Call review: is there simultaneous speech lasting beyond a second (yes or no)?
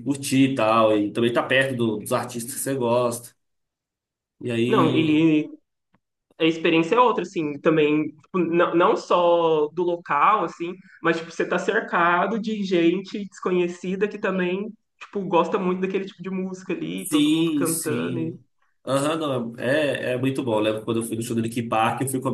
yes